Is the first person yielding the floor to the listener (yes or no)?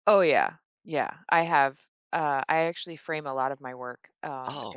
no